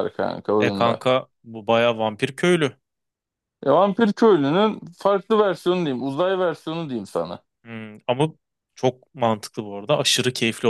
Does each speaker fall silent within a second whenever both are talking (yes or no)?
yes